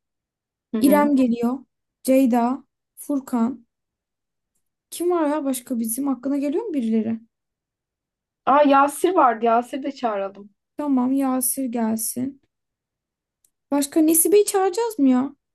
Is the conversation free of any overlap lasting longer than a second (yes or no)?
yes